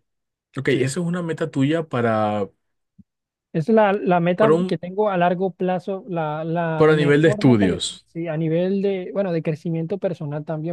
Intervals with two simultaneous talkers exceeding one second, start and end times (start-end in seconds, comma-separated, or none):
6.7-8.1